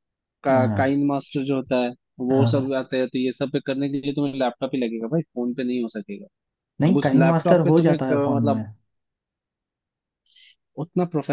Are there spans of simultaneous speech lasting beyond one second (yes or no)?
yes